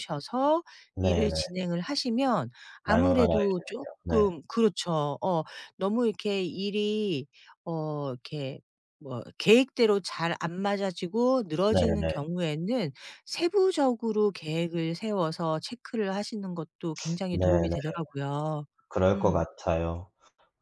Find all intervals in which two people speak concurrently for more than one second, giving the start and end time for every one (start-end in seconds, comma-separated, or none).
2.9-4.3